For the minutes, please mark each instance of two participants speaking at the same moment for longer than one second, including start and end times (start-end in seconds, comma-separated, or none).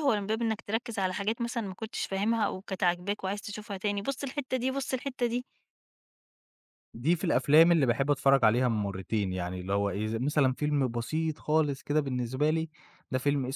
none